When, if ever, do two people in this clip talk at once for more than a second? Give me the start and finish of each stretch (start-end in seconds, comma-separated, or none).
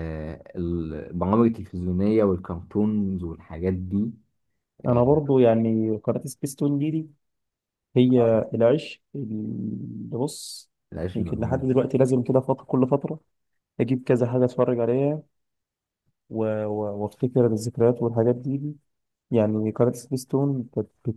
none